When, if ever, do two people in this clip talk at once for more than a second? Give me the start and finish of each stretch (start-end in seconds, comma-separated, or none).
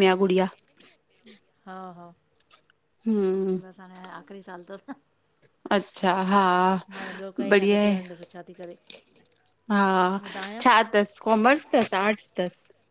none